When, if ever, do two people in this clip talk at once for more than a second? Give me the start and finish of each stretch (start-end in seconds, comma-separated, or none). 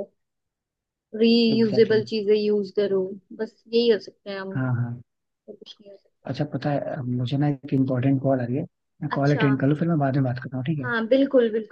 none